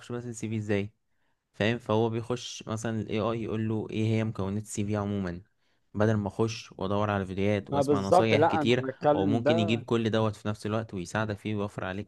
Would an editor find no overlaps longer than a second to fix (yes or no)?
no